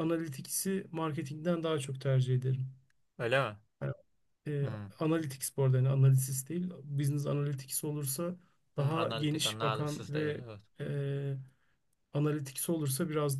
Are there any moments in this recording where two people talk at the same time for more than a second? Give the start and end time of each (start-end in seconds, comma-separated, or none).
8.8-10.4